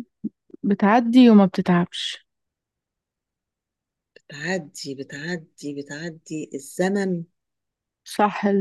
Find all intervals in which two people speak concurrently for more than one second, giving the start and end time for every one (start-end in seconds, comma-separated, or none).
none